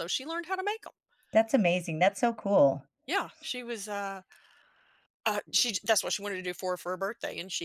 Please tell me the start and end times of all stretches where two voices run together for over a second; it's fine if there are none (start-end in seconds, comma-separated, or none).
none